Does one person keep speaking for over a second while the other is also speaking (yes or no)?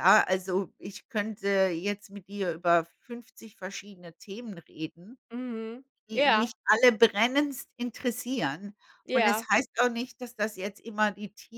no